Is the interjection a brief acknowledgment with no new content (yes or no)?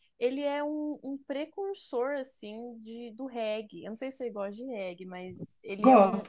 yes